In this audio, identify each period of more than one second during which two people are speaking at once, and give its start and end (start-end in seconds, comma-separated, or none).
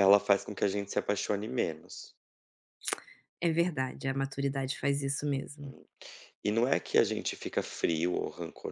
none